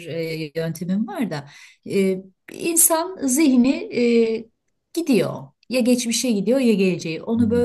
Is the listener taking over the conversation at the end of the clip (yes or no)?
no